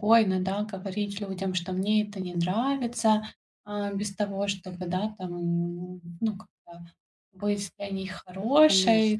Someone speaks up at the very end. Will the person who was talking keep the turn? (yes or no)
yes